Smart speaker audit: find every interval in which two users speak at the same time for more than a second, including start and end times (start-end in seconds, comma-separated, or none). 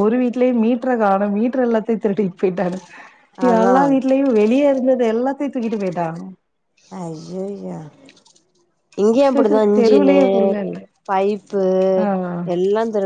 none